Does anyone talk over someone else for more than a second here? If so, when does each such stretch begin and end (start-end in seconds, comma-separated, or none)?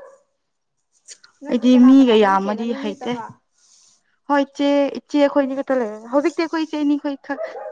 1.5-3.2